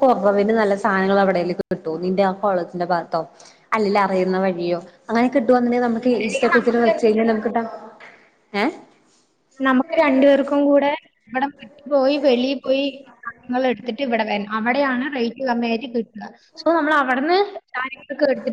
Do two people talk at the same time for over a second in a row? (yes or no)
yes